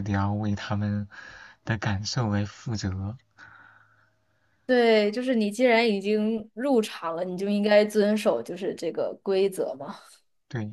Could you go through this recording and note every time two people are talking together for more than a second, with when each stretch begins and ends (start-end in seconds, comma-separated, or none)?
none